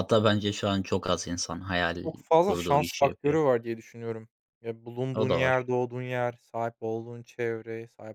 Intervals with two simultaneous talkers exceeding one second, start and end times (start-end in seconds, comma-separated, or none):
2.0-3.4